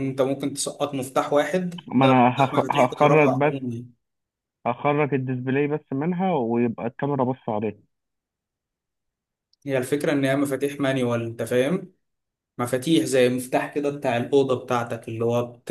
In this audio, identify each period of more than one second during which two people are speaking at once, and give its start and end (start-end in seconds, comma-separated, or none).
1.9-3.7